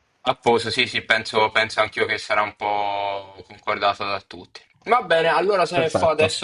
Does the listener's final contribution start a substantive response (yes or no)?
no